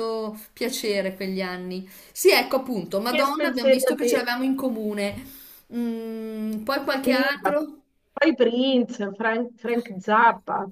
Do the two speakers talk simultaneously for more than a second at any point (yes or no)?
yes